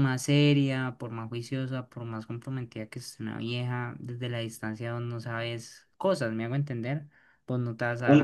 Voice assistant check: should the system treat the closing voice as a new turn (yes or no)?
yes